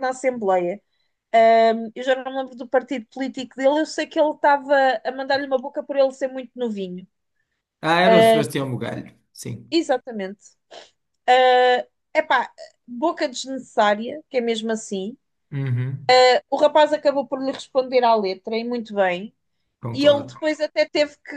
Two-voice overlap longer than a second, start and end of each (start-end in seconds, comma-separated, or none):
none